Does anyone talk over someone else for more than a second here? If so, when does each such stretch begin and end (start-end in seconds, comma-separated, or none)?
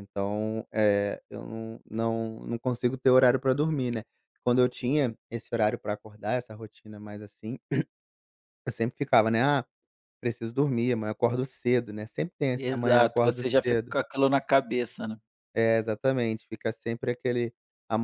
12.6-13.9